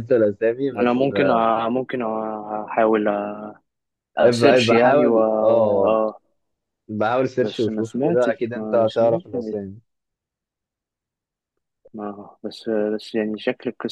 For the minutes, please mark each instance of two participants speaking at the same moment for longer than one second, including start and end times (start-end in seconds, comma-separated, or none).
4.2-6.0, 7.4-9.6